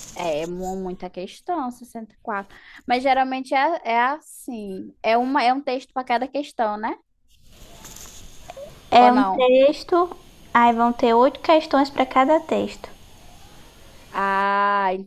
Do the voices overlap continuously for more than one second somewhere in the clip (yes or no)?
no